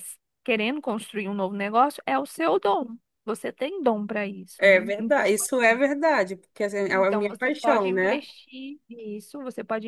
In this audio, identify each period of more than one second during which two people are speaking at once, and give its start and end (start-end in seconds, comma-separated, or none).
4.6-5.8, 6.9-8.2